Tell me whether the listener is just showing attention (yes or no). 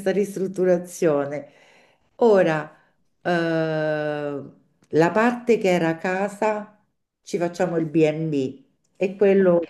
yes